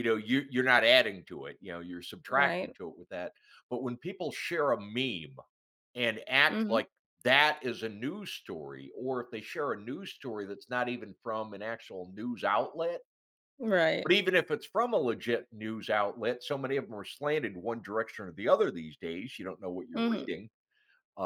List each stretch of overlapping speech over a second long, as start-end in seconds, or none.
none